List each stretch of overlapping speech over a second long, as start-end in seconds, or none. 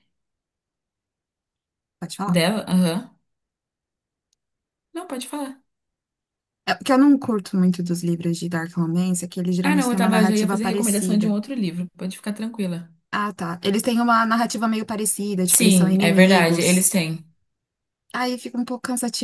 9.6-11.4, 15.5-16.9